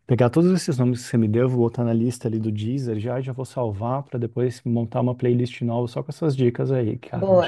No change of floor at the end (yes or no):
no